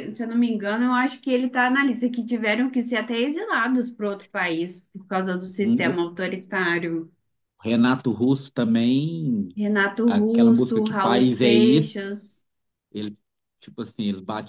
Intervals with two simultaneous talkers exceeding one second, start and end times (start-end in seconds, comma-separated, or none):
10.1-12.1